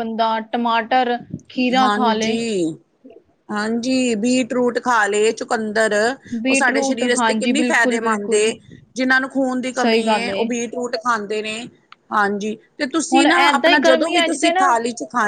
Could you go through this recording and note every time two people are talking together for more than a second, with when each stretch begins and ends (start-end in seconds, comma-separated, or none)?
6.5-8.5, 13.1-14.6